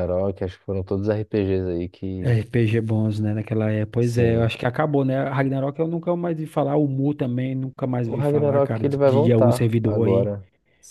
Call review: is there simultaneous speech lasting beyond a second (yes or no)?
yes